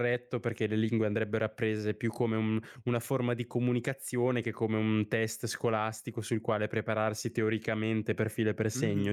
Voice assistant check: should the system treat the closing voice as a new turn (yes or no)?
yes